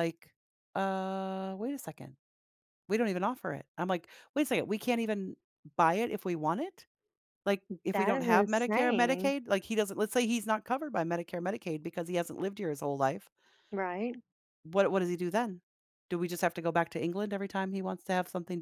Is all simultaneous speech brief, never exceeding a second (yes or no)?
no